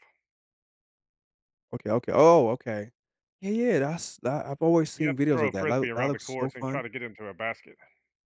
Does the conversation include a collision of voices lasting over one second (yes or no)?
yes